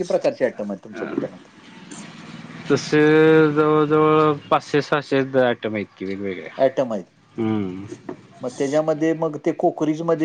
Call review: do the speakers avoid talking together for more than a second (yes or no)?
yes